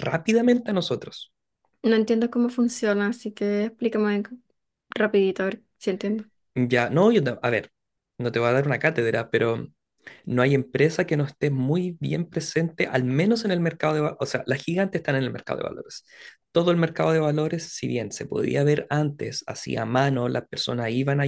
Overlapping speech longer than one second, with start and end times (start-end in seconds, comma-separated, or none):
none